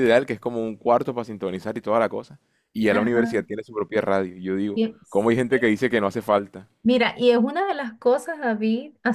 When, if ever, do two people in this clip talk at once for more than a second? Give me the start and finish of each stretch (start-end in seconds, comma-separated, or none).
none